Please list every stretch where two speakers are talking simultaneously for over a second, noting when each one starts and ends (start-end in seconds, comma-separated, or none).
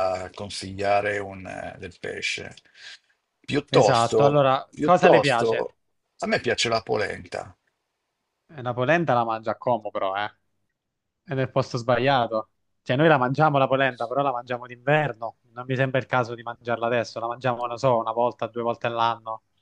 3.7-5.7